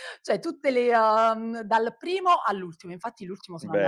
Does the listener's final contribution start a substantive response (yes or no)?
yes